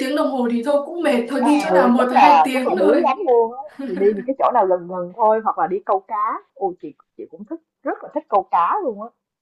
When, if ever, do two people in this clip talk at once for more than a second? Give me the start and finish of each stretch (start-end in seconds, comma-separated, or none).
1.4-3.1